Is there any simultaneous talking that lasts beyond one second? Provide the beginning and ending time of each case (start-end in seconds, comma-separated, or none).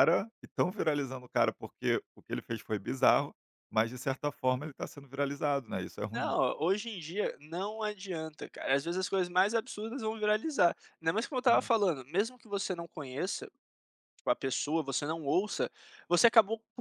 none